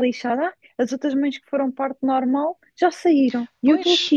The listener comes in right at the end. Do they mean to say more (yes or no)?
yes